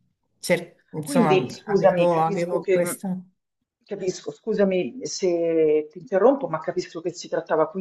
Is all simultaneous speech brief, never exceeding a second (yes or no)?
no